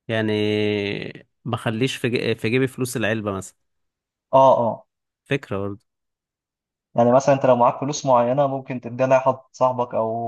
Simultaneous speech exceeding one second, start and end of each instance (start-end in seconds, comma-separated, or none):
none